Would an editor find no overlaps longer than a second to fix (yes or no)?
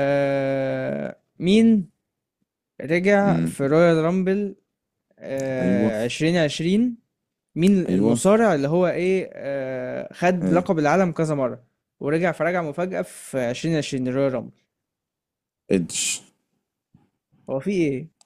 yes